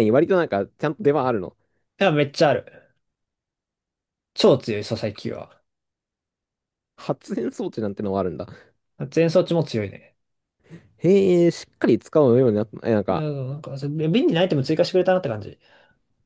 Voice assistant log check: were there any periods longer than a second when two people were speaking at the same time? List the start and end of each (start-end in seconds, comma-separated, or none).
none